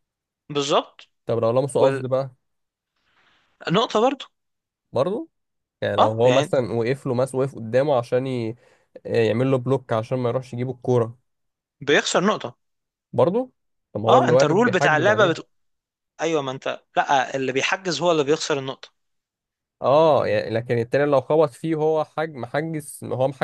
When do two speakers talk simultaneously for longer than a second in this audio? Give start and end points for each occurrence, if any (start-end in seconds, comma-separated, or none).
14.1-15.4